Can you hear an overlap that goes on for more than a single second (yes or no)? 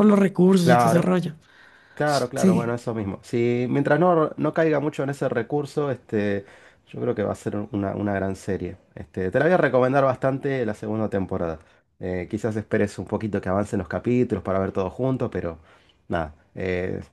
no